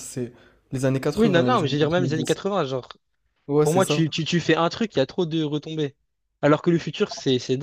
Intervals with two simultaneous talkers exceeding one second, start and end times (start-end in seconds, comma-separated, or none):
1.1-2.4